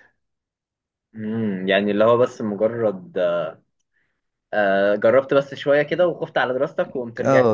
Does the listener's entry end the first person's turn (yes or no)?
yes